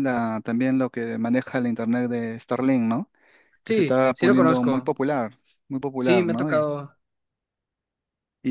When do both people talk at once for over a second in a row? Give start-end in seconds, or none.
3.6-4.9